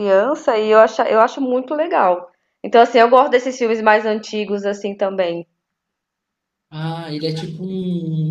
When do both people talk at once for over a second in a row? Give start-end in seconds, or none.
none